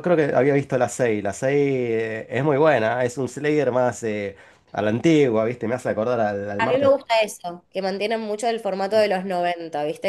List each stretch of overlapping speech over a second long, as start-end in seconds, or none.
none